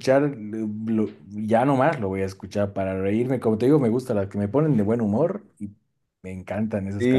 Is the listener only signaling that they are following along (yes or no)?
no